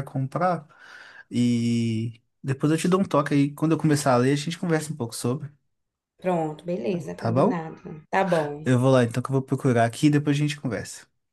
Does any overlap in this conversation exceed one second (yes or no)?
no